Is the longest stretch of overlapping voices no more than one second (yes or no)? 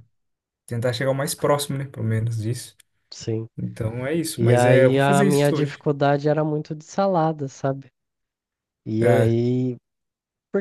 no